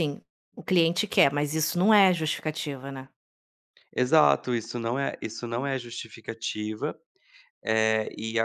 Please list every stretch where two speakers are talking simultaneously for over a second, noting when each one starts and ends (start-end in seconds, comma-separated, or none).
none